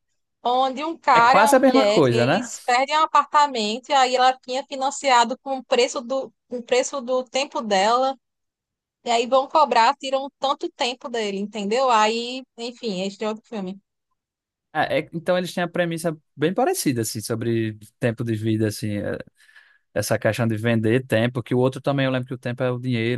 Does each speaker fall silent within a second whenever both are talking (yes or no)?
no